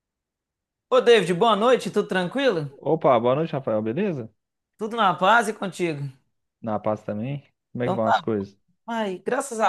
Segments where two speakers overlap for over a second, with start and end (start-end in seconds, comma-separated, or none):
none